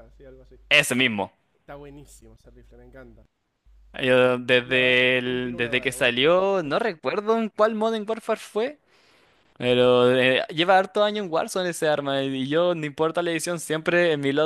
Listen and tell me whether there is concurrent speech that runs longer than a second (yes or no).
yes